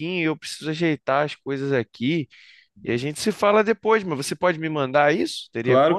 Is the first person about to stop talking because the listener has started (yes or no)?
yes